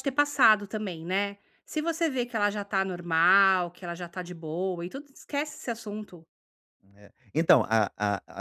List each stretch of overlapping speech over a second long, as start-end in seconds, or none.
none